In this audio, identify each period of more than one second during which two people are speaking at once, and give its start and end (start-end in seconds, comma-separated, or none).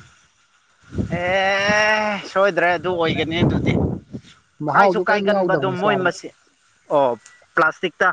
4.7-6.1